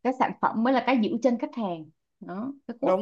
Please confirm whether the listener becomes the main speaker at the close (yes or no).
yes